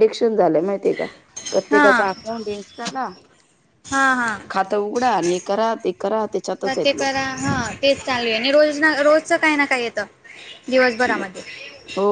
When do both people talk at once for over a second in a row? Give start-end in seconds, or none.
none